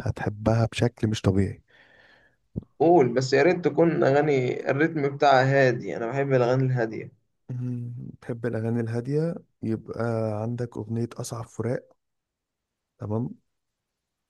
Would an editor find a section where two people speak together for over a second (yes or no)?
no